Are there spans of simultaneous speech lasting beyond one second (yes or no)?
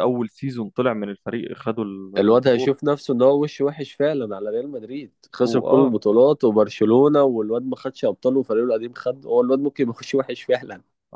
no